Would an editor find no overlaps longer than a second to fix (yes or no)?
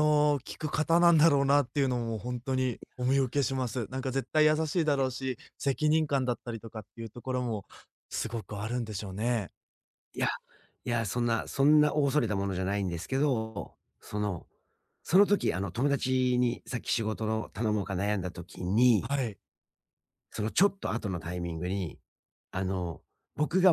yes